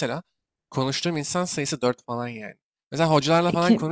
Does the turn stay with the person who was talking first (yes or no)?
yes